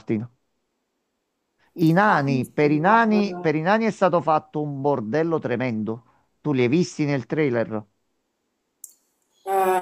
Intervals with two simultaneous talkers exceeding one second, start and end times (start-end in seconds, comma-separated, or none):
2.0-3.5